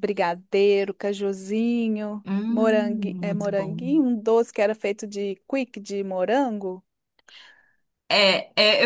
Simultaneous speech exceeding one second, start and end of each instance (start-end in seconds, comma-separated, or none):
2.2-3.8